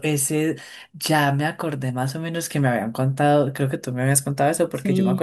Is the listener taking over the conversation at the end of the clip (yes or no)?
no